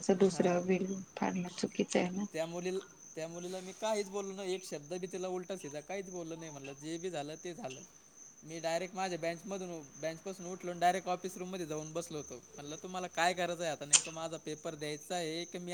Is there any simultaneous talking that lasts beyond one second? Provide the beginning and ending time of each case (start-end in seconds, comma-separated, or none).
none